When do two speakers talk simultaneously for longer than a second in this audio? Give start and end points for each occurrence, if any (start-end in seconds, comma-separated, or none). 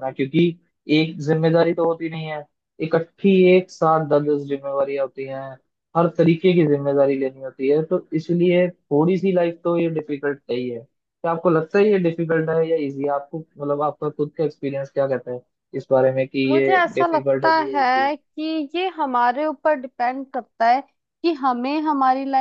16.5-18.2